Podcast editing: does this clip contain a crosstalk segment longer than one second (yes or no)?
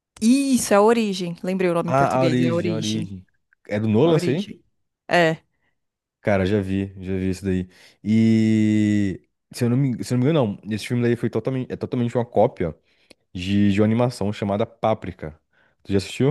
yes